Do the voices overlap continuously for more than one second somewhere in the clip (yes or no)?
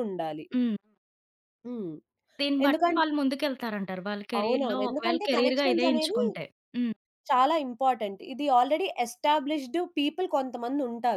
yes